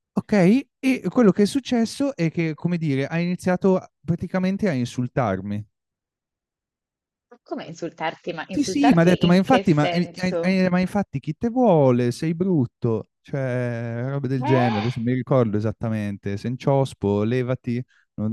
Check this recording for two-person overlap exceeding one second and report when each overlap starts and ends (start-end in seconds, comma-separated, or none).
8.5-10.6